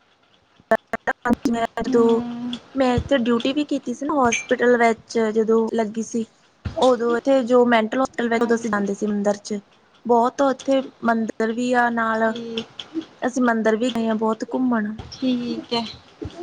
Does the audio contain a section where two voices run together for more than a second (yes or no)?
no